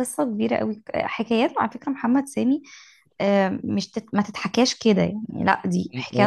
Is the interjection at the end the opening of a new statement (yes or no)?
yes